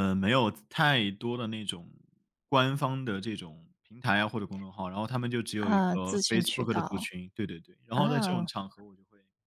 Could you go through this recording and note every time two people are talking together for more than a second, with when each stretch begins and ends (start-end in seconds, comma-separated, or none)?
5.6-7.1